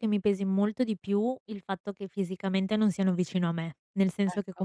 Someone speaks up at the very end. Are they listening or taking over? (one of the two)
listening